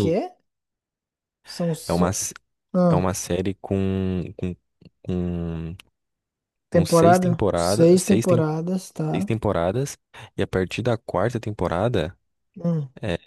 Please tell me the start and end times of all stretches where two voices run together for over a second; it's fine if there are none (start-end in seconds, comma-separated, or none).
6.7-8.5